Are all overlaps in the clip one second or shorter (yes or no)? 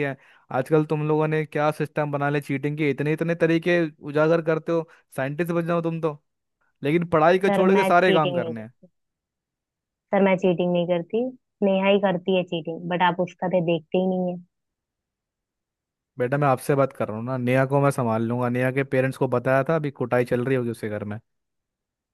no